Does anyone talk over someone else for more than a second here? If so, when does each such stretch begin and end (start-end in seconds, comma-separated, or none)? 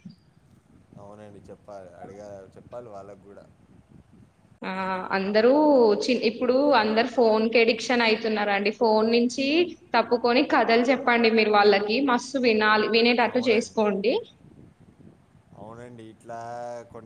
none